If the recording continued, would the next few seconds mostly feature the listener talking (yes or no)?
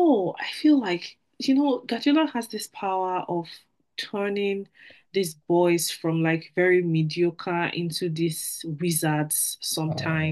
yes